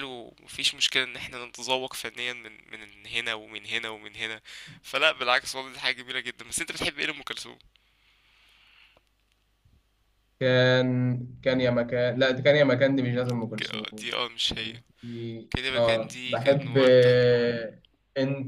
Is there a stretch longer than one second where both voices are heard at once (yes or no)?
yes